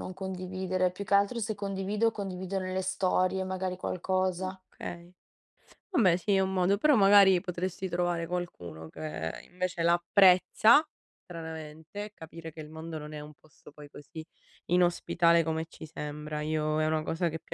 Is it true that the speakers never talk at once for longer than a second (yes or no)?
yes